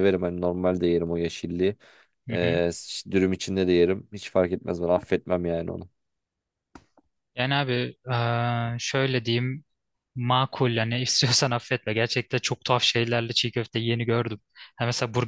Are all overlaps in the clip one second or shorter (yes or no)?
yes